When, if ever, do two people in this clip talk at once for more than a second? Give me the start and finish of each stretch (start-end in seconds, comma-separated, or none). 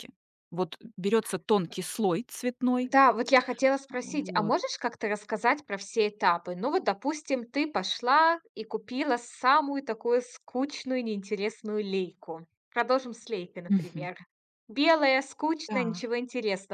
none